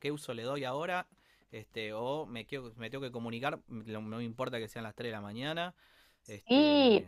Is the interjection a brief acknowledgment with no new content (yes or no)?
no